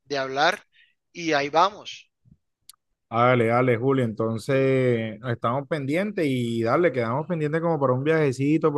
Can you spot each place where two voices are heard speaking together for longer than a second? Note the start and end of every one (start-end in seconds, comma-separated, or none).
none